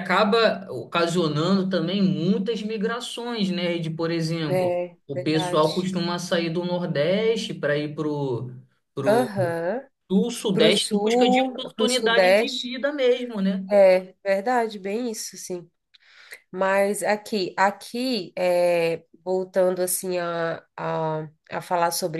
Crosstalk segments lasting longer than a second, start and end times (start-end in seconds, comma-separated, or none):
4.5-5.9, 10.5-12.7